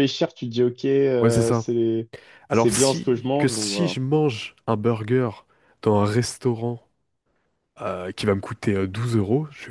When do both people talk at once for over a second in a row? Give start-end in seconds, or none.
2.5-4.0